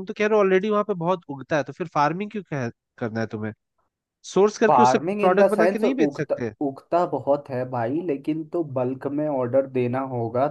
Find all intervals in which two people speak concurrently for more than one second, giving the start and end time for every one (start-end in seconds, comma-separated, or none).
4.7-6.5